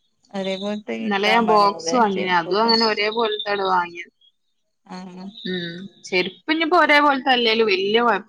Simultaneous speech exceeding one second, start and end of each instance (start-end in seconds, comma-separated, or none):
1.0-2.7